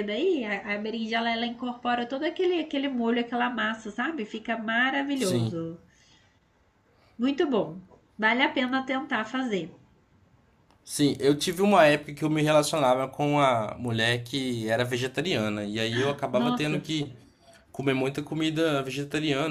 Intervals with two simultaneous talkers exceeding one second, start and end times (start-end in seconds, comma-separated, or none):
none